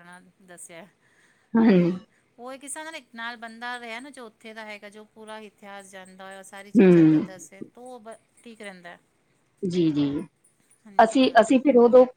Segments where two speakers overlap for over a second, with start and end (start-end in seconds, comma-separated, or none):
none